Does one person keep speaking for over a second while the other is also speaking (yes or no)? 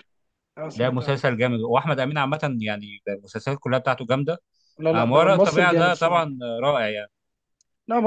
yes